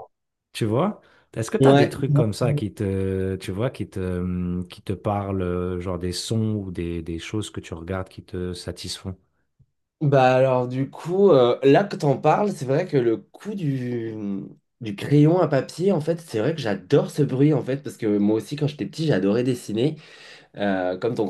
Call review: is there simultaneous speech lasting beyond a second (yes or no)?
no